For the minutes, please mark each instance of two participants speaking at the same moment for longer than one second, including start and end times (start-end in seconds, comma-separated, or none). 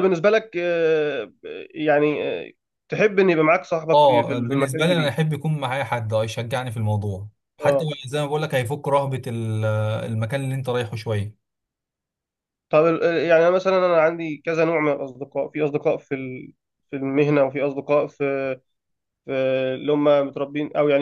3.9-5.1